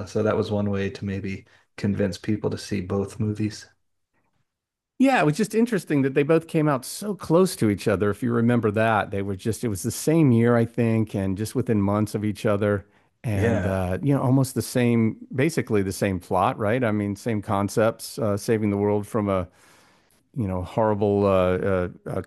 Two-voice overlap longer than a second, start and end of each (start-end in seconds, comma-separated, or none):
none